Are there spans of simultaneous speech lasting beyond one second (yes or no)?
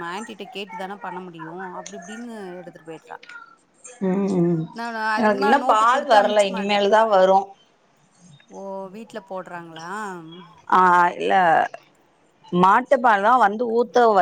yes